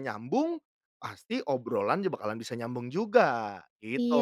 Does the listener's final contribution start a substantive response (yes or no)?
yes